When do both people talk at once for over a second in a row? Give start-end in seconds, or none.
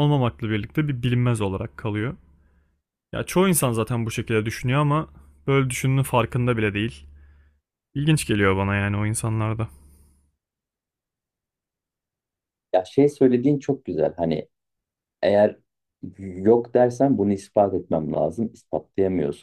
none